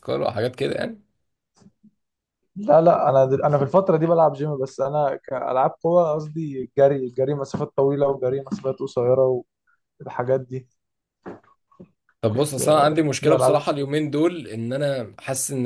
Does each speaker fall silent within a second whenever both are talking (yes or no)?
no